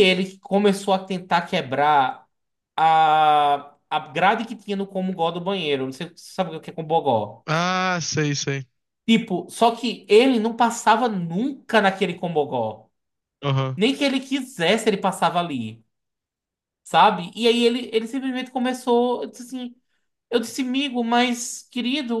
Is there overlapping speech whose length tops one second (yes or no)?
no